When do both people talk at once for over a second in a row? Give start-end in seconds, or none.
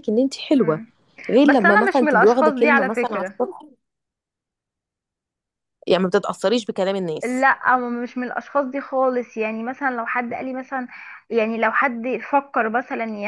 1.4-3.4